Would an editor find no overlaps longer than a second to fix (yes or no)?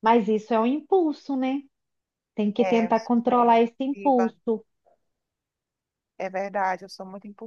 no